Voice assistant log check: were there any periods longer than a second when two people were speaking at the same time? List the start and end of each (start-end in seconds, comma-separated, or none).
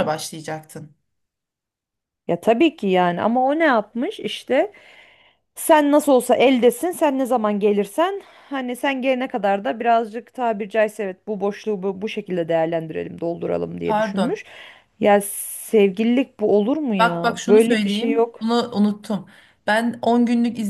17.0-18.4